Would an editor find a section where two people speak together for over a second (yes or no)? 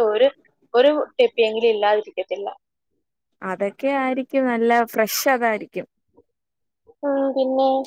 no